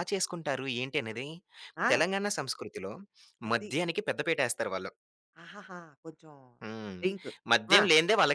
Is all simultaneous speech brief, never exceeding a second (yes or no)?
yes